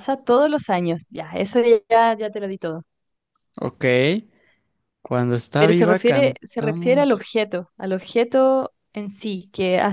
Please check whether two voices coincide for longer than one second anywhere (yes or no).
yes